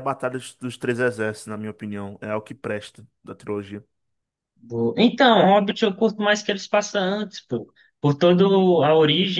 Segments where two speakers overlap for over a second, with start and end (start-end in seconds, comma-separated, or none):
none